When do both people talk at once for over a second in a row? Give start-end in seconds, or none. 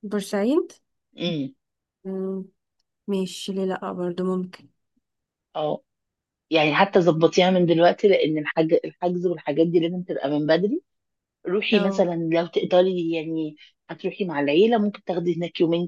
none